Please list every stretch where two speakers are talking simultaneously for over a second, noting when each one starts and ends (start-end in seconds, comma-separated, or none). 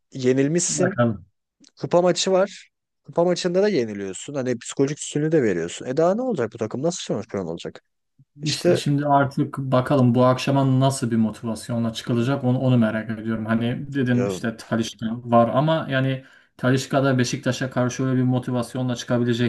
none